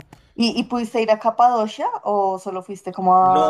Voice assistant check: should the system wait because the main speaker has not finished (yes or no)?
no